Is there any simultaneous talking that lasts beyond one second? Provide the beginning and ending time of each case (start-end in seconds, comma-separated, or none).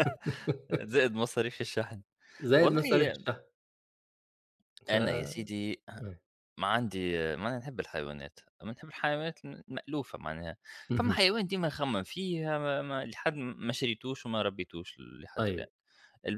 none